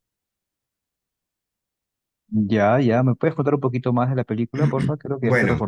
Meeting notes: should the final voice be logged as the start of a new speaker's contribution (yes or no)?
yes